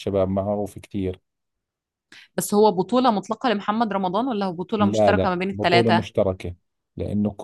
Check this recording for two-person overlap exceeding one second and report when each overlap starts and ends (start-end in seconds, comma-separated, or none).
4.8-6.2